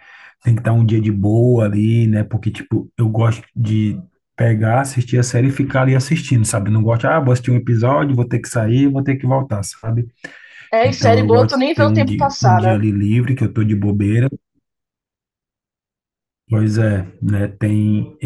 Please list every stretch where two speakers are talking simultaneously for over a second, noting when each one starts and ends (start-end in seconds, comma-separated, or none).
10.8-12.8